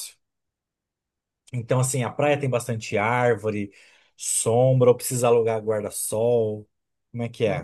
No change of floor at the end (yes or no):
no